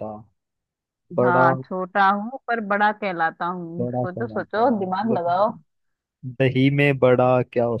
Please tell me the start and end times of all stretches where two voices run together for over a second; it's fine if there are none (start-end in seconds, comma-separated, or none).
3.8-5.5